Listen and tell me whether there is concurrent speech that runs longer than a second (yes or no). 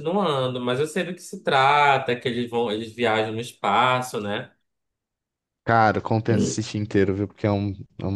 no